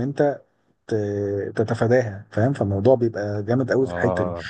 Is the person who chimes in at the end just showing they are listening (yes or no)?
yes